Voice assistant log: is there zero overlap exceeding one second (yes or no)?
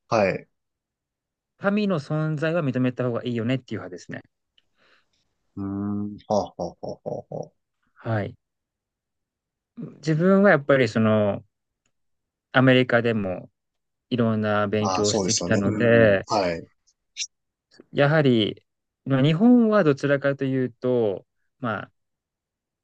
no